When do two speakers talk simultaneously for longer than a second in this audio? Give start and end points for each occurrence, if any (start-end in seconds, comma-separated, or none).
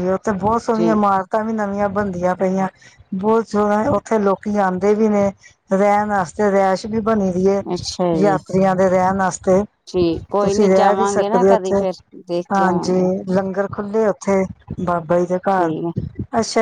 10.4-11.8